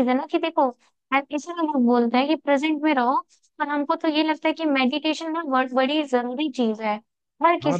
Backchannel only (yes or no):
no